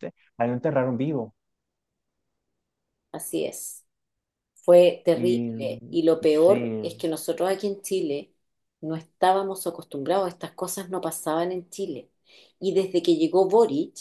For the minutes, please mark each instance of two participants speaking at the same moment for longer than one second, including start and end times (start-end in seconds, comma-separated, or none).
5.1-7.0